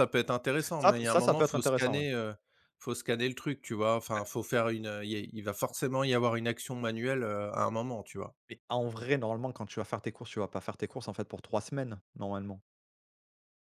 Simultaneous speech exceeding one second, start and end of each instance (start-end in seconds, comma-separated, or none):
0.8-2.0